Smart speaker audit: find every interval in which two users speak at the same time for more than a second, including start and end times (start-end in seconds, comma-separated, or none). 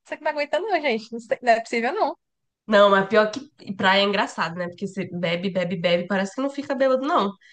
none